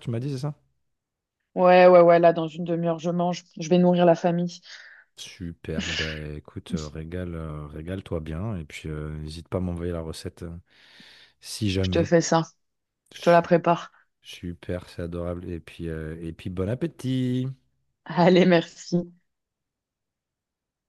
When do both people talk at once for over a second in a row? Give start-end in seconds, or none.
none